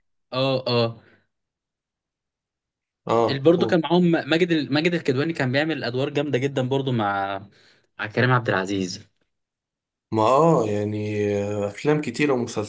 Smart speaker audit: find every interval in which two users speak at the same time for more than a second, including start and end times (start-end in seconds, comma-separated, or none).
none